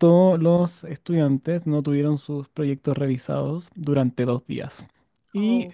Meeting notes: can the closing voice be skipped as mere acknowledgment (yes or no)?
yes